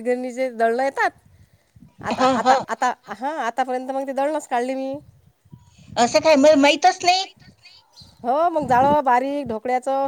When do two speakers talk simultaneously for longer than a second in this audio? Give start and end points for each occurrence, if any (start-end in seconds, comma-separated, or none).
none